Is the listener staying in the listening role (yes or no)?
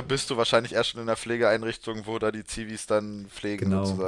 no